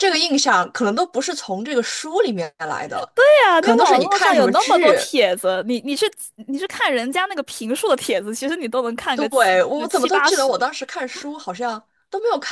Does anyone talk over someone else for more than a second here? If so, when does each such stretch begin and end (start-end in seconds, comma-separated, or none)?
3.6-5.0, 9.1-10.5